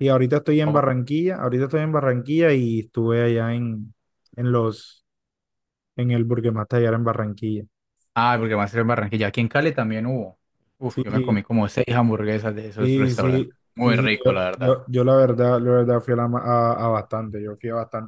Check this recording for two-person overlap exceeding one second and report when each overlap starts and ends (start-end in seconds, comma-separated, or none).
12.8-14.8